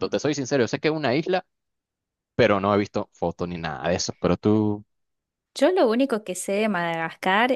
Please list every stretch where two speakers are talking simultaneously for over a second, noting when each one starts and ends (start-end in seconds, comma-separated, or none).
none